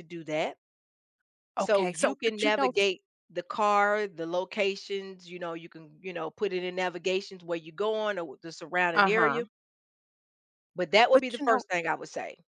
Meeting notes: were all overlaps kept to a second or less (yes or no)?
no